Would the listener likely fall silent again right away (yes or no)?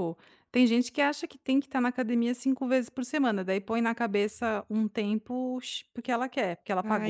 no